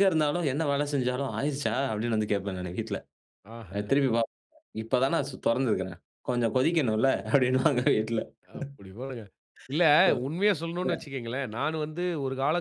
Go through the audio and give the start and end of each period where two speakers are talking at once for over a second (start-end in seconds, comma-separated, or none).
none